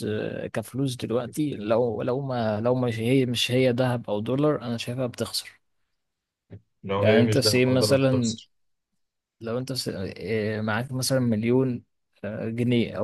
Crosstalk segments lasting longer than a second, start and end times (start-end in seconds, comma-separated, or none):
7.0-8.3